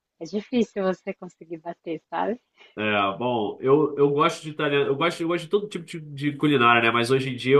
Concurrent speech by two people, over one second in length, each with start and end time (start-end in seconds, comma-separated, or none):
none